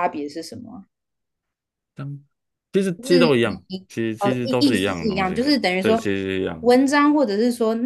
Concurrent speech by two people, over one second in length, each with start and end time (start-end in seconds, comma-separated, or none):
3.0-6.0